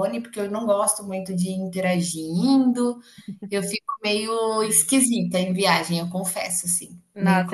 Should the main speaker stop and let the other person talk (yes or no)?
yes